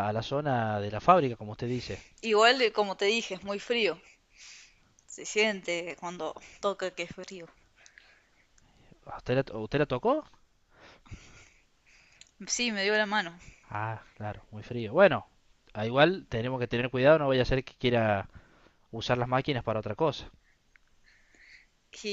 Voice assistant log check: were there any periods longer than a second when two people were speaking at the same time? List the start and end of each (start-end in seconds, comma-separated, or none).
none